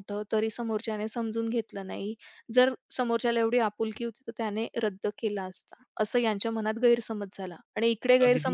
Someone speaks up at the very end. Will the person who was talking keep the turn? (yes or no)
yes